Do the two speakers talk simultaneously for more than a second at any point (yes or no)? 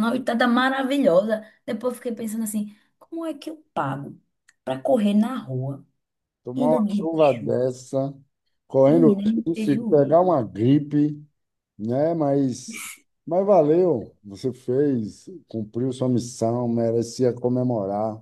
yes